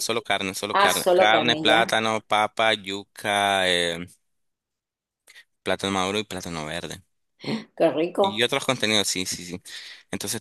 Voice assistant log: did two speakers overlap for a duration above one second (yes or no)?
yes